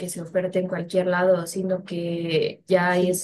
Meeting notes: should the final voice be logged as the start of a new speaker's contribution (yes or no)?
no